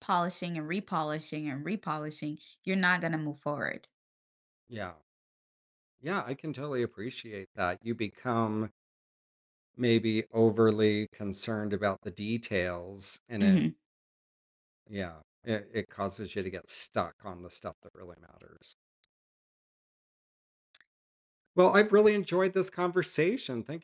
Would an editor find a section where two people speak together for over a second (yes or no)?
no